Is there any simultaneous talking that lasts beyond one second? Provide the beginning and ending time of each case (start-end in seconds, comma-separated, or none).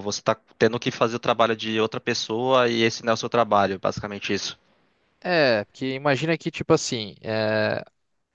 none